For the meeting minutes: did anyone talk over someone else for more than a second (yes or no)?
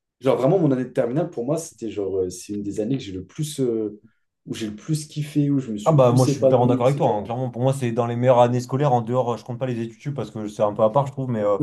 yes